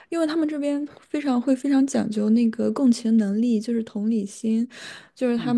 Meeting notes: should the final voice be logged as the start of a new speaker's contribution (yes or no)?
no